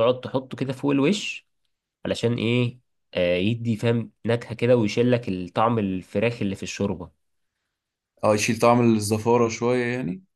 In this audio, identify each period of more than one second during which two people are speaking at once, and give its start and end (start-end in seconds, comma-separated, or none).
none